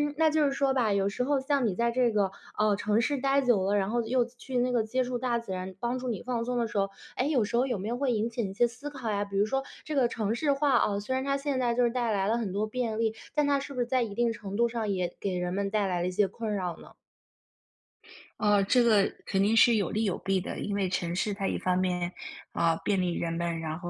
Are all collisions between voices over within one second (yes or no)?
yes